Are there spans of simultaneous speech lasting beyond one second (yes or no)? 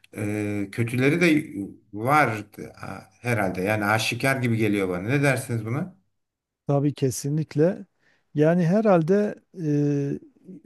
no